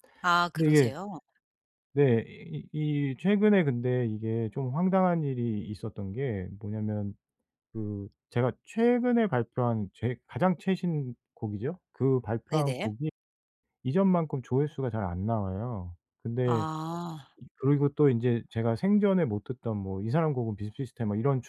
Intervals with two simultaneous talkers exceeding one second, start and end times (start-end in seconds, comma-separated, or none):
none